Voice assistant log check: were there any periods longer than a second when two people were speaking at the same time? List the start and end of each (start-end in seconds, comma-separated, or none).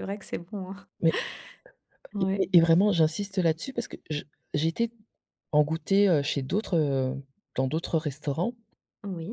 none